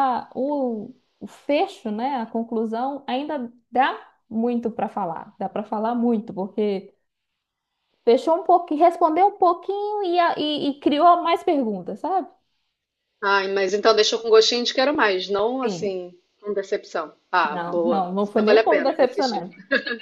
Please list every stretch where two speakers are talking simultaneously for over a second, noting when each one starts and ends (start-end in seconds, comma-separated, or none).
17.5-19.4